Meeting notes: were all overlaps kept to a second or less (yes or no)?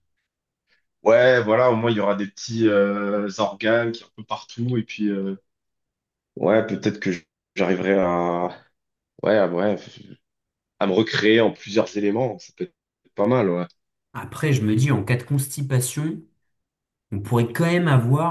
yes